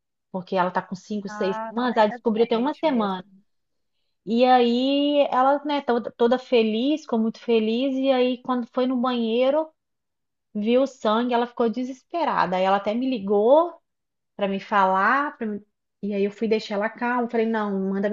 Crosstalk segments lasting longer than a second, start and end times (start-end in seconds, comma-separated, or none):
1.3-3.2